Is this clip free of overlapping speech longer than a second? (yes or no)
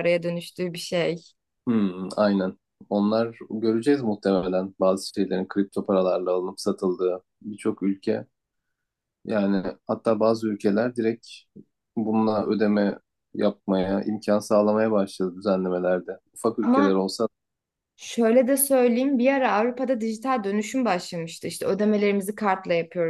yes